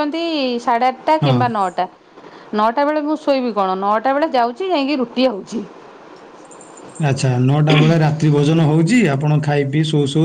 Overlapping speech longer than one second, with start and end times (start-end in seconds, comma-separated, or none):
none